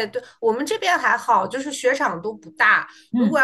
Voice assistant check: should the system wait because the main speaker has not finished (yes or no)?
yes